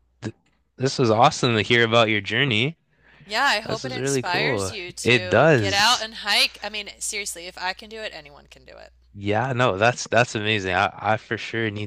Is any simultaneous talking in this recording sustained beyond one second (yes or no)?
yes